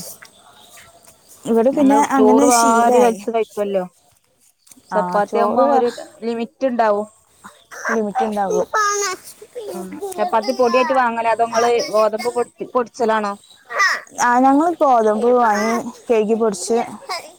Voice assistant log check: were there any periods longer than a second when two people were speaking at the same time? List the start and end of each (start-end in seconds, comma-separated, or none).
1.8-3.2